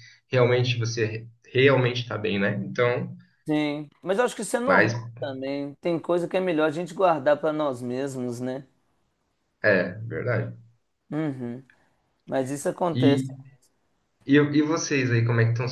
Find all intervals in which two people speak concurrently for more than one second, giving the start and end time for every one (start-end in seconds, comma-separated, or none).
none